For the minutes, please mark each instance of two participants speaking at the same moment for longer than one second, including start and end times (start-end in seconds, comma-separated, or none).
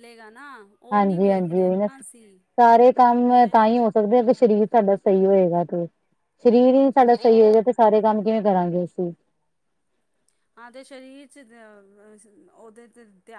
0.9-2.4